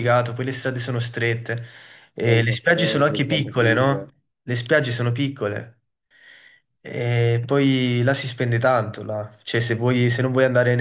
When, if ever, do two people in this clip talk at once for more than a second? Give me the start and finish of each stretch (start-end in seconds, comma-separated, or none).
2.2-4.0